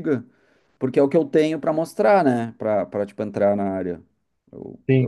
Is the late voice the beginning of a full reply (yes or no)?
yes